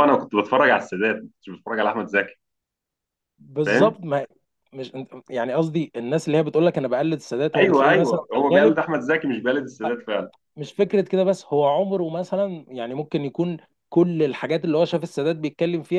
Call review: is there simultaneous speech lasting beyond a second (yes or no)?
yes